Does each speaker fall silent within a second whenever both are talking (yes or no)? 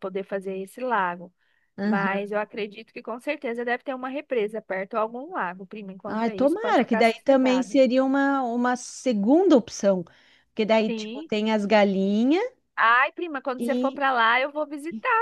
no